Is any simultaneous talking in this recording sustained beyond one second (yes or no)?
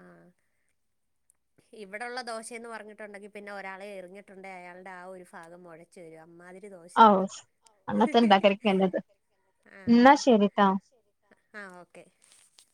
no